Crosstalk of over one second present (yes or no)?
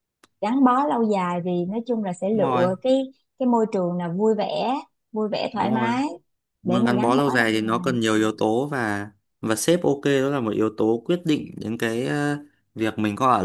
yes